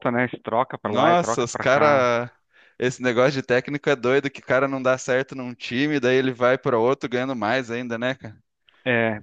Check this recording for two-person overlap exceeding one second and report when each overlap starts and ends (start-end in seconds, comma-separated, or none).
0.8-2.1